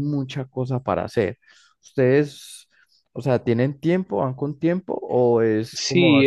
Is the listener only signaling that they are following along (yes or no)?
no